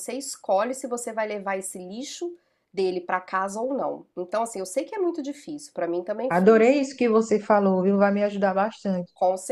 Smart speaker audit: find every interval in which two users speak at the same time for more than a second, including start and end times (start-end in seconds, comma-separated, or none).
none